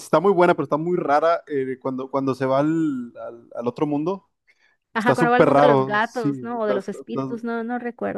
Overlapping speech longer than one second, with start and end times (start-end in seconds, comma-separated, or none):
5.0-7.2